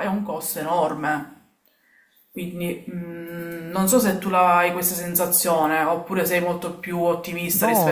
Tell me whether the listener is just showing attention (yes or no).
no